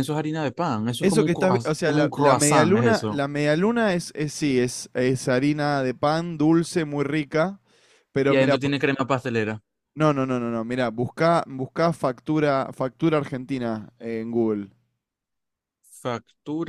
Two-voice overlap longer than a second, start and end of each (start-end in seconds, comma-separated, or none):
1.0-3.2